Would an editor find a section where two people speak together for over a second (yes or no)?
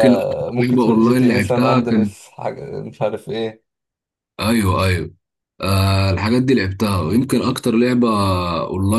yes